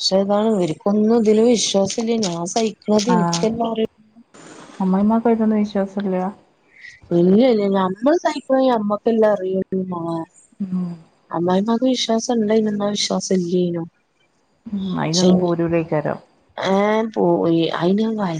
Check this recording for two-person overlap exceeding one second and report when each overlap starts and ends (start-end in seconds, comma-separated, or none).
none